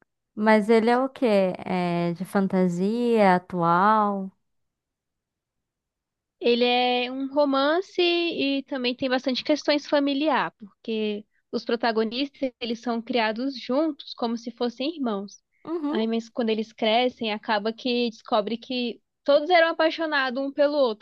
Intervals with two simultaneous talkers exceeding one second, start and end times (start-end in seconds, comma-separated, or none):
none